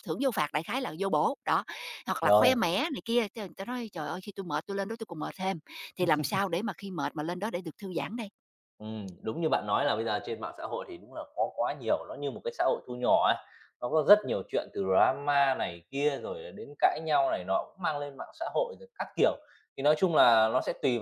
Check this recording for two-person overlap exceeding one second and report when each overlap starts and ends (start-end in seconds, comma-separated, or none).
none